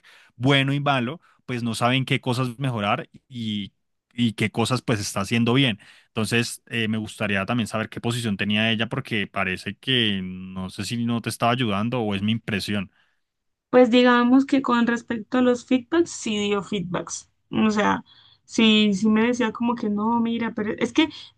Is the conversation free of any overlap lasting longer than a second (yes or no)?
yes